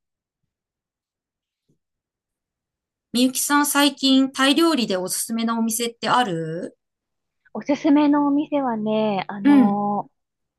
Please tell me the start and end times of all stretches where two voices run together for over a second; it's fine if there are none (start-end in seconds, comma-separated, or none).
none